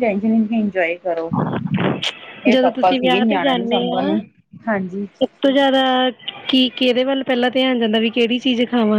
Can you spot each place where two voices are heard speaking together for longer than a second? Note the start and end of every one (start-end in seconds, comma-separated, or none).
2.5-4.2